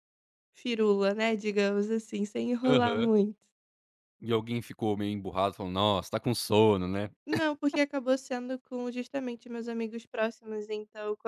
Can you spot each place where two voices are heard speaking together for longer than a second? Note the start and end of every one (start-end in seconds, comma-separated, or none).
none